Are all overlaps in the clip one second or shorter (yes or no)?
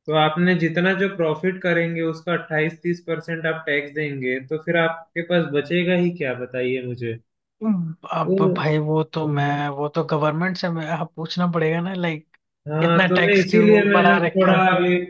no